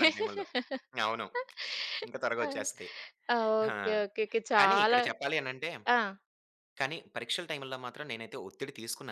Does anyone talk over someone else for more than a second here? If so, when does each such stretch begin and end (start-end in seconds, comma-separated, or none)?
none